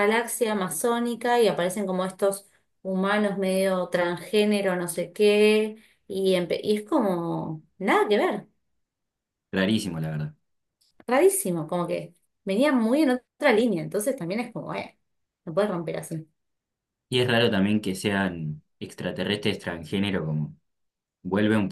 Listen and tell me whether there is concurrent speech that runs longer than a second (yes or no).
no